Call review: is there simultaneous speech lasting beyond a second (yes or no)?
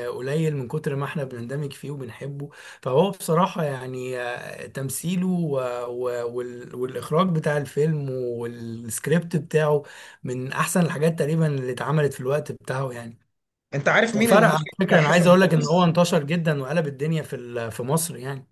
yes